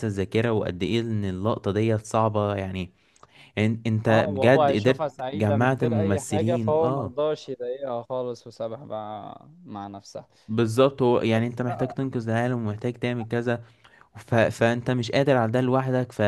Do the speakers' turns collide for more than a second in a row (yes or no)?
yes